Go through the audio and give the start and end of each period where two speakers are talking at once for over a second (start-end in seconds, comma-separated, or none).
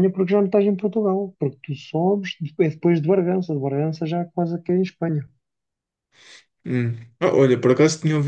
none